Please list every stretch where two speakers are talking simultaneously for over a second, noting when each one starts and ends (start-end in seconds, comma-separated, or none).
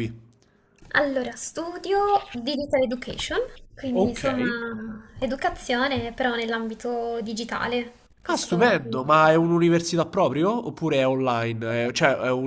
none